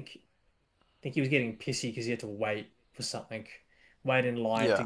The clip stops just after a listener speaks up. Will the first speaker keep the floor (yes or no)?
yes